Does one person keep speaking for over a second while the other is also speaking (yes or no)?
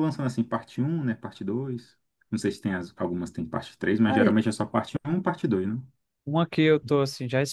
no